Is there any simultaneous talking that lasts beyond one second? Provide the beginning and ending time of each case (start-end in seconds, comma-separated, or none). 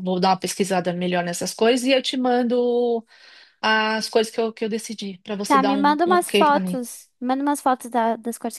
5.5-6.8